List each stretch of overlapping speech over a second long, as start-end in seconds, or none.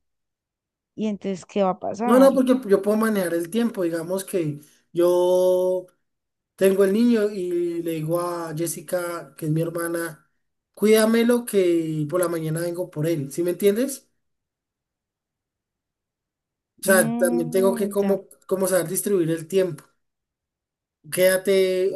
16.8-18.2